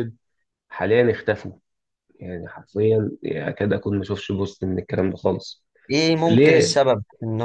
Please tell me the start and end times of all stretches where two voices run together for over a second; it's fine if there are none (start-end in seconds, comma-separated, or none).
none